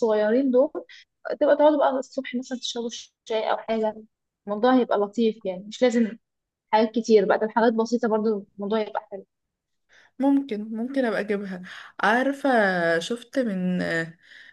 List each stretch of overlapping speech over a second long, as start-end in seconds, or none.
none